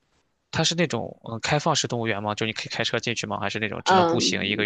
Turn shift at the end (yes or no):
yes